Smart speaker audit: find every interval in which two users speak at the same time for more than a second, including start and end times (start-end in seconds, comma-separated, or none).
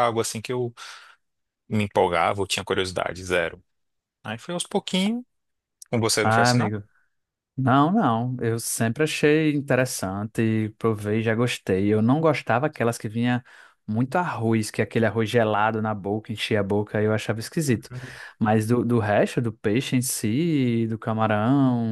none